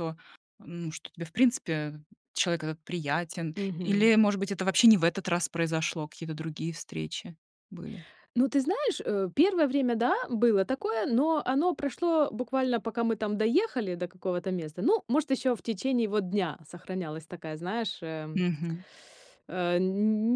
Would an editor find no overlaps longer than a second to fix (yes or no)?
yes